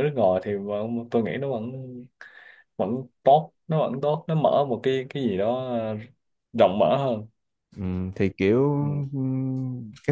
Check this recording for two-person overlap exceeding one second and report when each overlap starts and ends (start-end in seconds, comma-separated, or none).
none